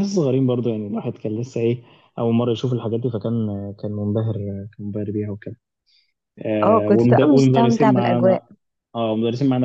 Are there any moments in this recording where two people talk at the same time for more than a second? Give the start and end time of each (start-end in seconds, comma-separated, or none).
6.6-8.4